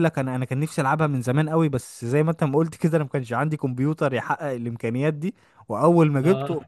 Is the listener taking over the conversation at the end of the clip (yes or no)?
no